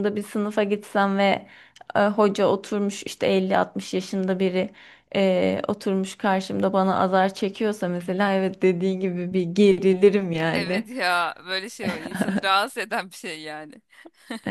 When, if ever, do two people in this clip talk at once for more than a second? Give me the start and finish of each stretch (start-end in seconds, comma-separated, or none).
none